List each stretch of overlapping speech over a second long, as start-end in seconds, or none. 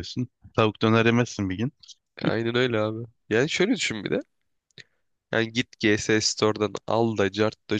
none